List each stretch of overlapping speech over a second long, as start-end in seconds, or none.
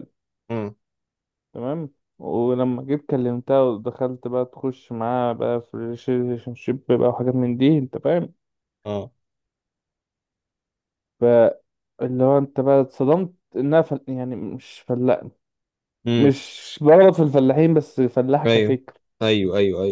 none